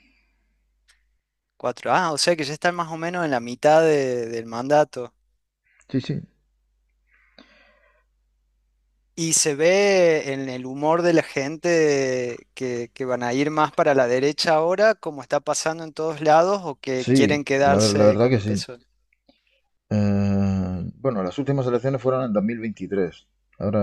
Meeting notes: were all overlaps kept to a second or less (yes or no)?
no